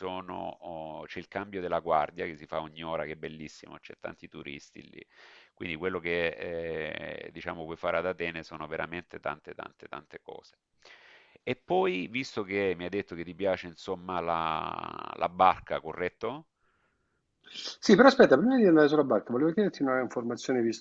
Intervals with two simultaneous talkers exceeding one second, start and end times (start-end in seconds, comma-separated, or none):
none